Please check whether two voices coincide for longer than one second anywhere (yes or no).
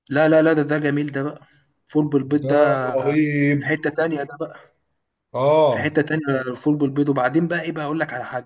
no